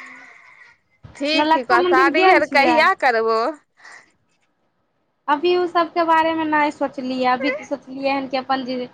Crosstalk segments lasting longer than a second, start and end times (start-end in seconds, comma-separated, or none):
1.4-2.8